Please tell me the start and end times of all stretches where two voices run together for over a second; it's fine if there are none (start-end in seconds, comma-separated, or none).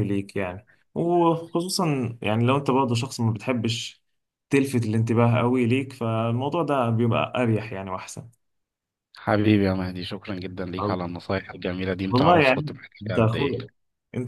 12.1-13.5